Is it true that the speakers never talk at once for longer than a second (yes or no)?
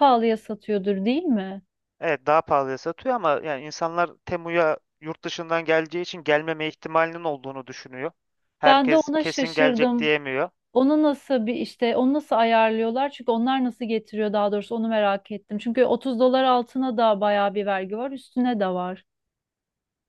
no